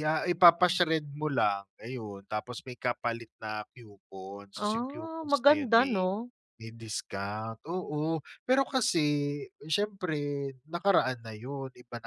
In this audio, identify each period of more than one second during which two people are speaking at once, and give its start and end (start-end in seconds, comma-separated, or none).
4.5-6.1